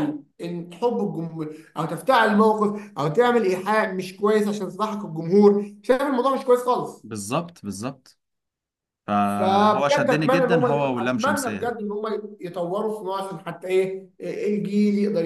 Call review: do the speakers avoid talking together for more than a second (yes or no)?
no